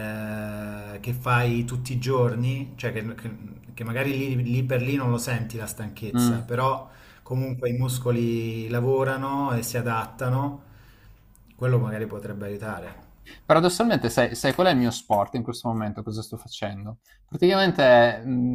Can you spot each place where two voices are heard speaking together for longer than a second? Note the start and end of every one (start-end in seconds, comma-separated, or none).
none